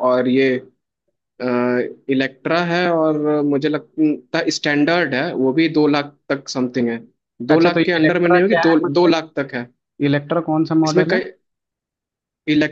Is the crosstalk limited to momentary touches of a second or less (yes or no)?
no